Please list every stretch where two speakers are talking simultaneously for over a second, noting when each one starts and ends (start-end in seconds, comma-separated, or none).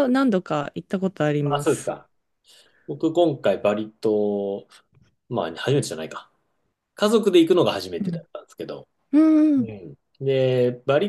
none